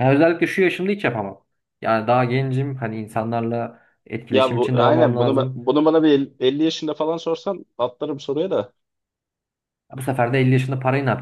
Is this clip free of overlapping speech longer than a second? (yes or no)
no